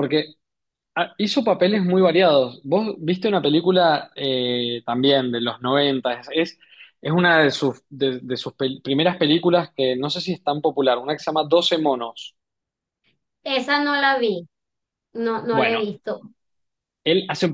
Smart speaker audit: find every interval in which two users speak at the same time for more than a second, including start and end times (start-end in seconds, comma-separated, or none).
none